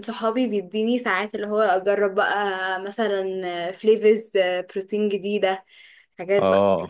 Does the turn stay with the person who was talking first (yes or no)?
yes